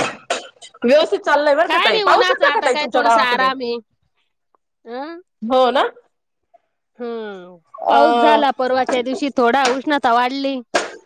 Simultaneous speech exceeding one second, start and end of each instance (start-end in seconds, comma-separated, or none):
1.7-3.5